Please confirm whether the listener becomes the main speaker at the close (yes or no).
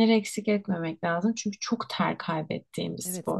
yes